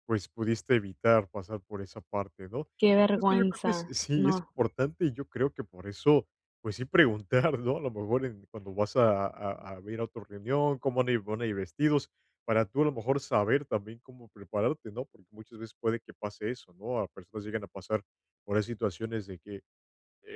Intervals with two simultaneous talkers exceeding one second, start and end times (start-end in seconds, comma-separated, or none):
2.8-4.5